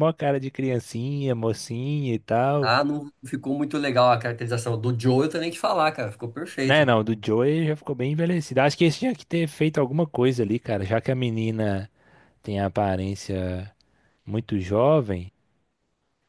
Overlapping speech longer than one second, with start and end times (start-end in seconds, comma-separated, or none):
none